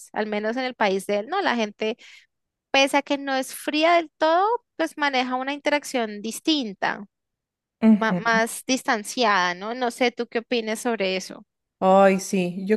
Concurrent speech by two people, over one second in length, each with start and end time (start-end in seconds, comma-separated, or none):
none